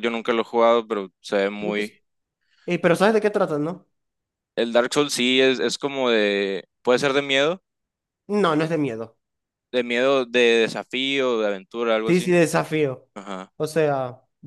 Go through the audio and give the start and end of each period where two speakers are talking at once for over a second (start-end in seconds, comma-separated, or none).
none